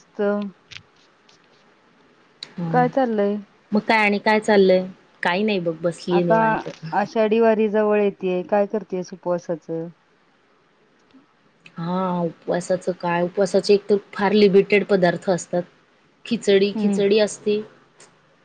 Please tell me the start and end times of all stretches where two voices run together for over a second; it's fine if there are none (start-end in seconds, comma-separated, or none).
none